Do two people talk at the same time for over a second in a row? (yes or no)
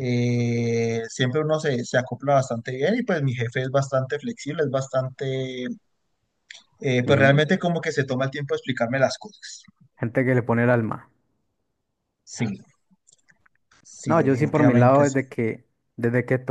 yes